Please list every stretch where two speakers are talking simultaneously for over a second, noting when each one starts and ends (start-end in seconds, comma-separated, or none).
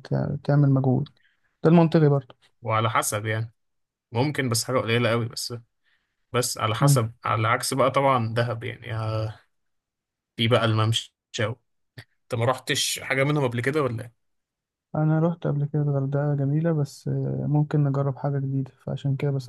none